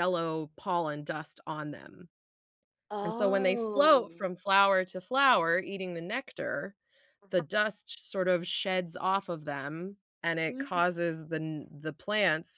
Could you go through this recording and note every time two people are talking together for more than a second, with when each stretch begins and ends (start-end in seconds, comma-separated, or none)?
3.0-4.2